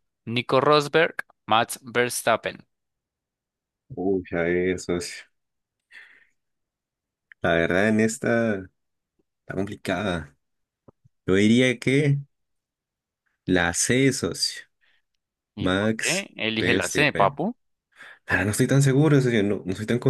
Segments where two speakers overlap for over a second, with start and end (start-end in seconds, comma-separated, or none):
15.6-17.4